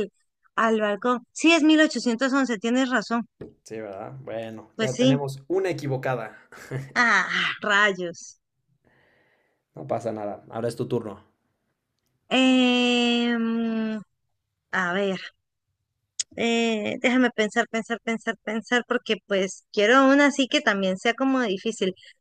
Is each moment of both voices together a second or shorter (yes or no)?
yes